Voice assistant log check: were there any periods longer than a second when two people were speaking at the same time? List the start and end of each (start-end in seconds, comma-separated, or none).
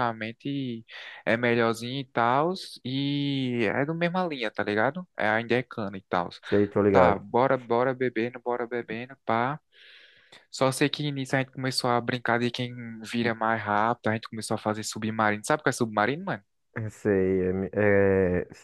none